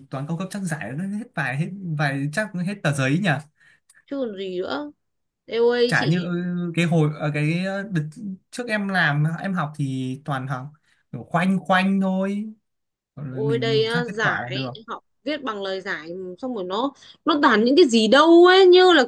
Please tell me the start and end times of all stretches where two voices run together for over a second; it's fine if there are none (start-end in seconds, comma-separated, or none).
13.3-14.7